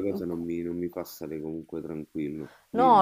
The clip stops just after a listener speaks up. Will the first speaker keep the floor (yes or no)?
no